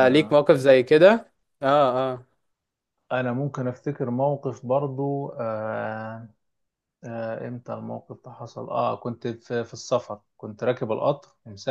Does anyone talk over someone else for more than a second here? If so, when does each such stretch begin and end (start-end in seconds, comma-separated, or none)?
none